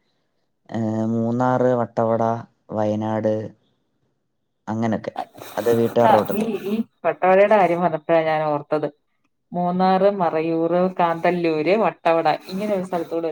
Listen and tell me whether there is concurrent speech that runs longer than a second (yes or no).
no